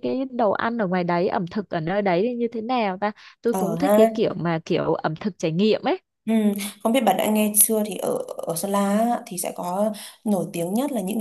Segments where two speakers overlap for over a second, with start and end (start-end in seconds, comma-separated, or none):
none